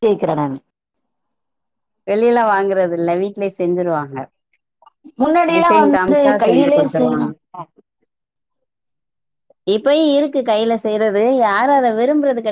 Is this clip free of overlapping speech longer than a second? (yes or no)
no